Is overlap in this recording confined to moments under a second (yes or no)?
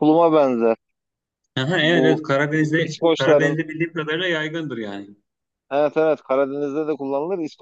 no